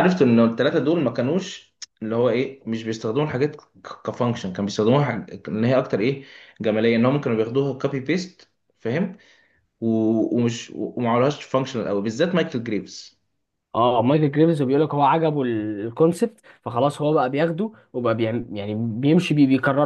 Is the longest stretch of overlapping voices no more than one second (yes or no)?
yes